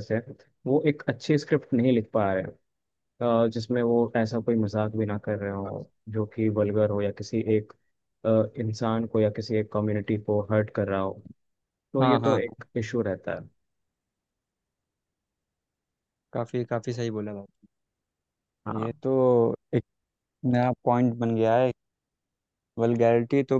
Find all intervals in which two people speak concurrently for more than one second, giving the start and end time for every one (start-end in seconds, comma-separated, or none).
none